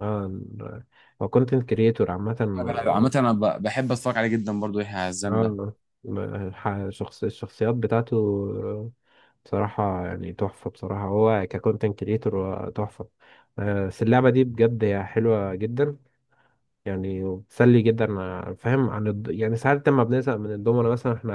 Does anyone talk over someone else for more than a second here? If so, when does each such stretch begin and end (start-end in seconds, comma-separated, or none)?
none